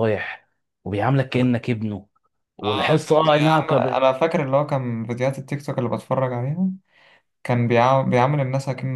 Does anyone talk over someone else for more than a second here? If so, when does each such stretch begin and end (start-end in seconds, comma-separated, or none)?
2.6-4.0